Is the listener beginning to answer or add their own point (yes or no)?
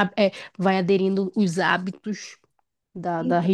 no